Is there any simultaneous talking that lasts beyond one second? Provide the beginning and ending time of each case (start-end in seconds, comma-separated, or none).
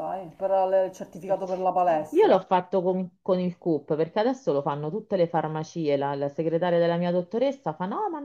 none